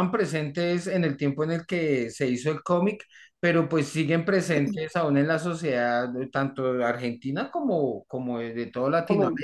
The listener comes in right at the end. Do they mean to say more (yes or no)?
yes